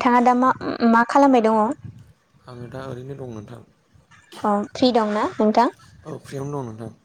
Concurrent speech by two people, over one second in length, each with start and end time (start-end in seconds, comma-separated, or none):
none